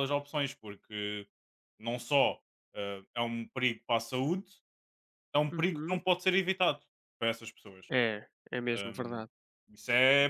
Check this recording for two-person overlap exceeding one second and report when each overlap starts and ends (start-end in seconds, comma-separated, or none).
none